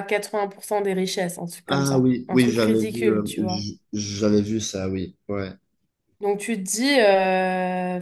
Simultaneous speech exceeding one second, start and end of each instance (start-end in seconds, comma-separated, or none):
1.7-3.6